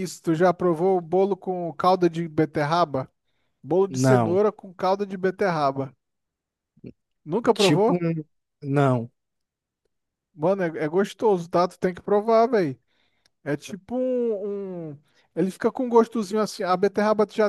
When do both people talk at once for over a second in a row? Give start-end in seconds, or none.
none